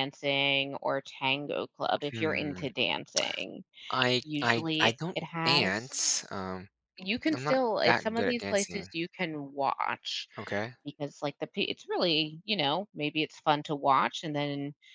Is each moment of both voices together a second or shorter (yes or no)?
no